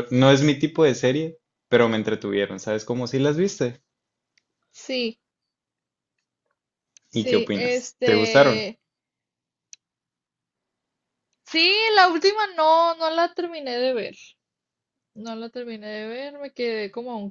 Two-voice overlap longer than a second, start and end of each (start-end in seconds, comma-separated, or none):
7.1-8.7